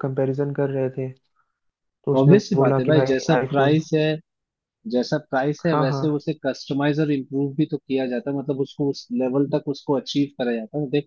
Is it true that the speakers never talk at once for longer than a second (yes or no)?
no